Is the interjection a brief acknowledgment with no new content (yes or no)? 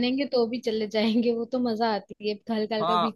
no